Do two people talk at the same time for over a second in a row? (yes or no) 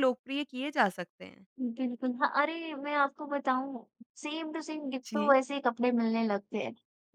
no